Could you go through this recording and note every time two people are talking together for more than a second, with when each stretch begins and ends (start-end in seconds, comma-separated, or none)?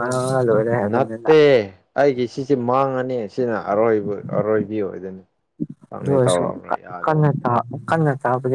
none